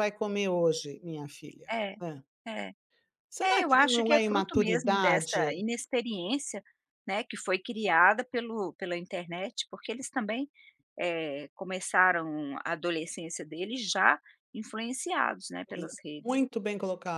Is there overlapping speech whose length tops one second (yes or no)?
yes